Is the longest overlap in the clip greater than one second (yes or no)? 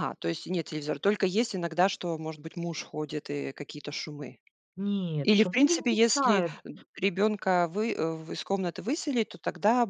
yes